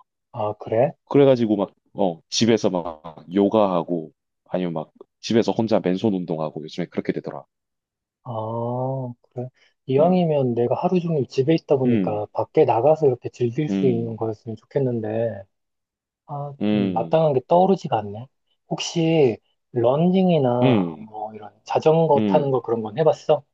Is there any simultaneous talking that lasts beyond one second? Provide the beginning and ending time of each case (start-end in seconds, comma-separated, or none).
none